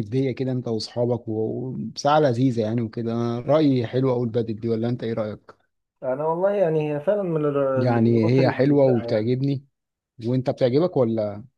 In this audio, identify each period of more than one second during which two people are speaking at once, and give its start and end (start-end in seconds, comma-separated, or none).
7.8-9.3